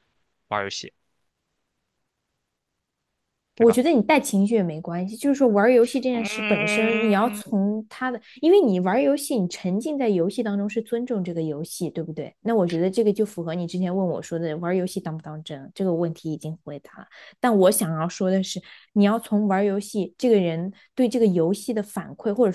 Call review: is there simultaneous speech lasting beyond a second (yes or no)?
yes